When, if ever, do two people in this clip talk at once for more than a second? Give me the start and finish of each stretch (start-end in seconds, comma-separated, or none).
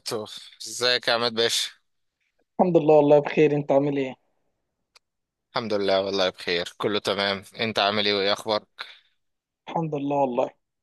none